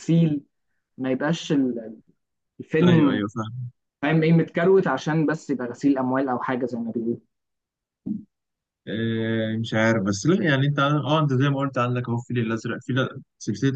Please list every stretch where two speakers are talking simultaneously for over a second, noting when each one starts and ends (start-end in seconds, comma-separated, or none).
none